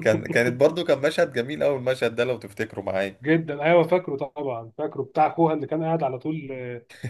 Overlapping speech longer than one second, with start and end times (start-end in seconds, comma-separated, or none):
none